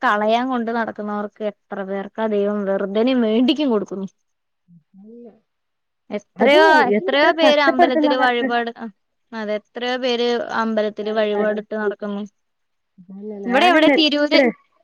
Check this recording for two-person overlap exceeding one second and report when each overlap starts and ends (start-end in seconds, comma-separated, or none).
6.4-8.5